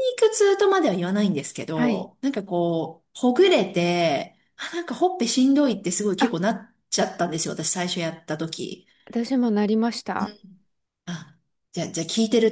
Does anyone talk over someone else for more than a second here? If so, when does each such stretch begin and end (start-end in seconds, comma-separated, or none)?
none